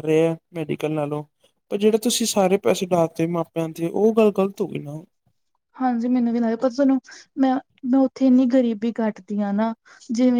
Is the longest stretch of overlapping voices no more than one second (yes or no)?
yes